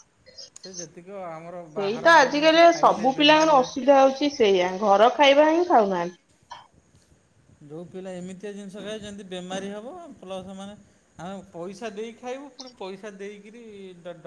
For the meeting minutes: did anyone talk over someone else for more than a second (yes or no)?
yes